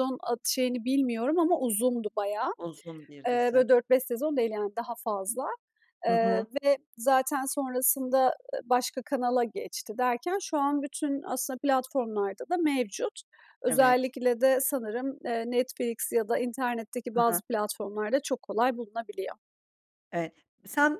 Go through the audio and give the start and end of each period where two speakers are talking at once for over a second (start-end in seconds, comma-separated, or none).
none